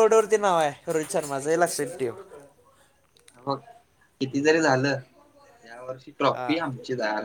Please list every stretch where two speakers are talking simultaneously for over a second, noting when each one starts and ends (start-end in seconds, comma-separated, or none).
none